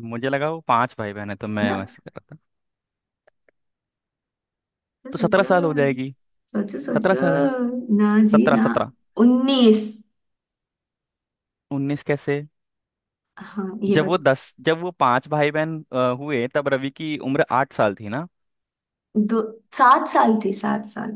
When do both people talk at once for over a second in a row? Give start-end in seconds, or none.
none